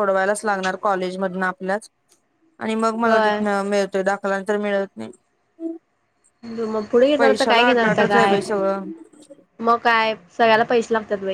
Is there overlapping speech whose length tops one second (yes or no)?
yes